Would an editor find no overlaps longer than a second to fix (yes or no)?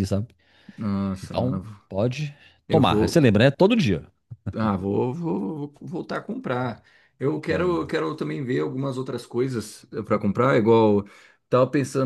yes